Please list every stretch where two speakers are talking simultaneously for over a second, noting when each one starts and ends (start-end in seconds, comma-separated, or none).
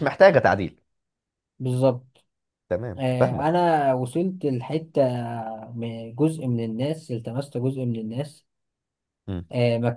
none